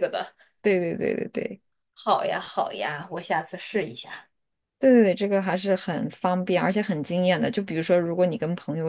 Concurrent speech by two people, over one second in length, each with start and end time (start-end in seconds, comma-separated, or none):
none